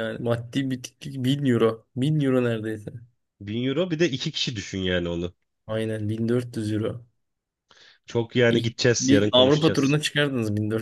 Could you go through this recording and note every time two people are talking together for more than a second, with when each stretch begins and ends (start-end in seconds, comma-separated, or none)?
8.5-10.0